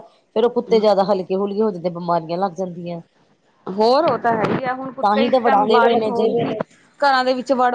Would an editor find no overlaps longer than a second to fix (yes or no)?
no